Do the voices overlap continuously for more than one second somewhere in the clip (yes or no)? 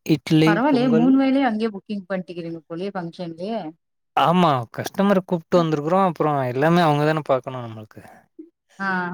no